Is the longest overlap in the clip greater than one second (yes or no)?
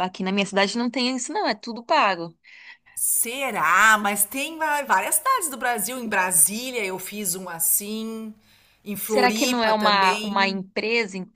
yes